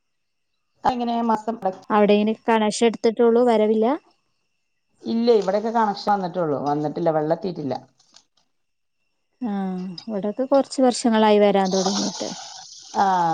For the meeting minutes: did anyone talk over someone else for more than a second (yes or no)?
no